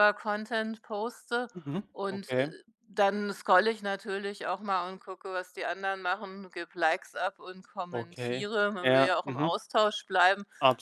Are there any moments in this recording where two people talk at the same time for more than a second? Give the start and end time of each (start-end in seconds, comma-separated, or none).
7.9-9.5